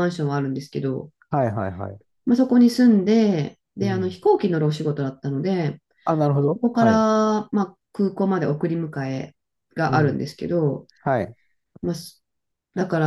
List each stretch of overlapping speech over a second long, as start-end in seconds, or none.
none